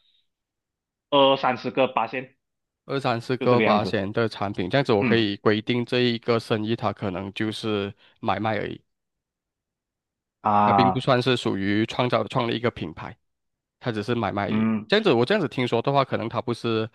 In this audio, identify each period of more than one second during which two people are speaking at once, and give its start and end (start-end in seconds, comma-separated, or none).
none